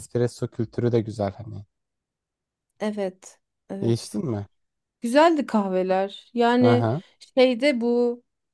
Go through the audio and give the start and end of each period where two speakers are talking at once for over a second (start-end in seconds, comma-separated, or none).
none